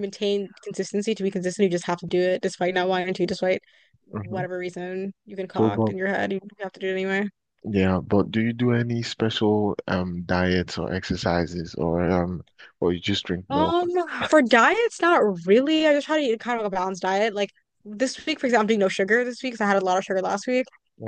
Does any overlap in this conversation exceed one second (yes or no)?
no